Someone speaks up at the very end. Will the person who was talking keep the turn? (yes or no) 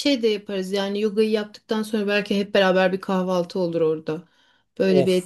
no